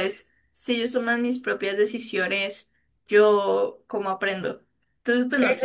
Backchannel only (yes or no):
no